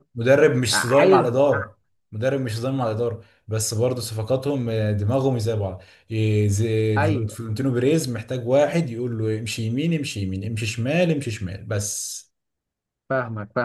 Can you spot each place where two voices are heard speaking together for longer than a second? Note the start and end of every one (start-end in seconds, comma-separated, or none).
none